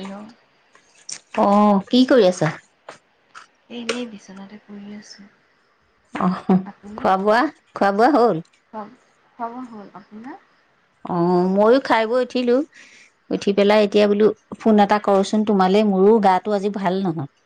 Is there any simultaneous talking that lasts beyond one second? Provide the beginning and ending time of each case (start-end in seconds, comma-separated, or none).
none